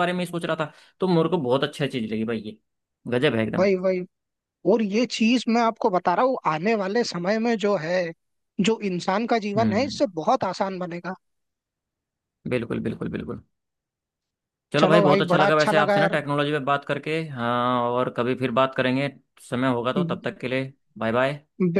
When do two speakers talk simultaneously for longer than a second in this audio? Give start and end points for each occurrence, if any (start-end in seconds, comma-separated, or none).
14.8-16.2